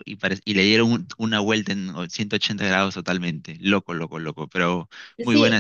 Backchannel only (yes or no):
no